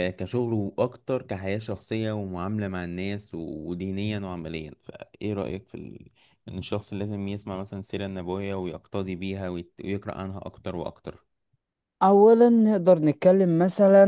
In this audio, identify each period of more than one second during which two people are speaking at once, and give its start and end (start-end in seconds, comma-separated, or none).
none